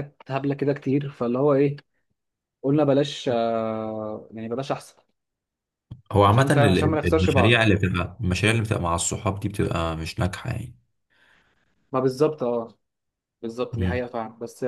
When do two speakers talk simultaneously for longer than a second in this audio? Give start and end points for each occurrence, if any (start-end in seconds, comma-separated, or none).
6.3-7.7